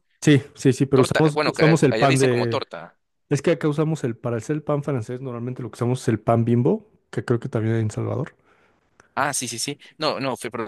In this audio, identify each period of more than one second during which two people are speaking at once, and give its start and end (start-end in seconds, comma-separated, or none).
0.9-2.6